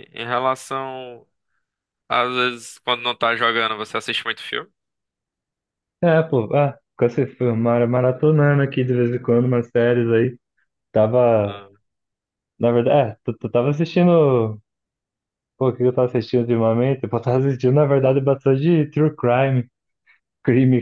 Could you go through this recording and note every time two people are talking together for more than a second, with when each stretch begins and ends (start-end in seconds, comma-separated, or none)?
none